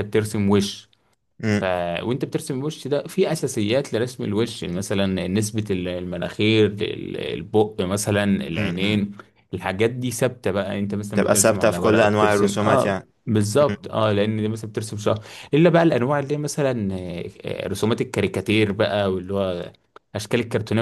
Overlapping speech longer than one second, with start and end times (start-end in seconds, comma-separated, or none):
11.1-13.1